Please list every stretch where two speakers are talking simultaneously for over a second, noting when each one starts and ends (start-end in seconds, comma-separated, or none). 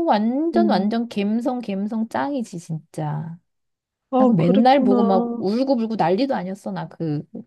4.2-5.4